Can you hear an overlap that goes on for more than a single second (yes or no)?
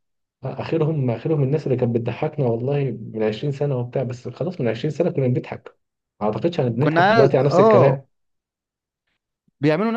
yes